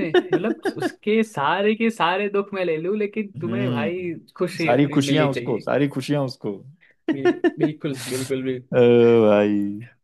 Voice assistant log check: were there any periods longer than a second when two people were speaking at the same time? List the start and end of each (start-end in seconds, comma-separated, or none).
3.5-5.7